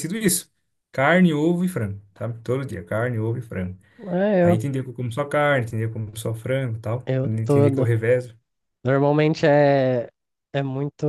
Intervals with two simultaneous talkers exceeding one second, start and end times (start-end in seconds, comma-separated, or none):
none